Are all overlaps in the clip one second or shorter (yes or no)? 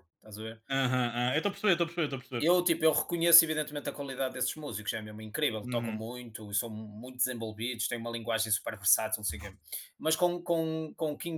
yes